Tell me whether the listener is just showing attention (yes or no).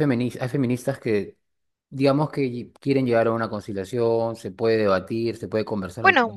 no